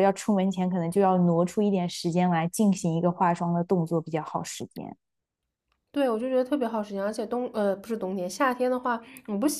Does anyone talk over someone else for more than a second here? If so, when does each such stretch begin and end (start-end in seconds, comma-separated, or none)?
none